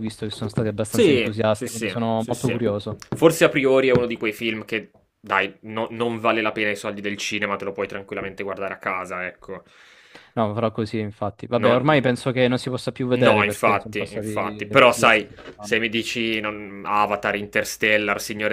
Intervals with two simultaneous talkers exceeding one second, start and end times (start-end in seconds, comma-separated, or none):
0.9-2.6, 13.1-15.8